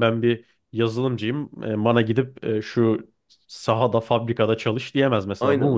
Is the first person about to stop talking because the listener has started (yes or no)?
yes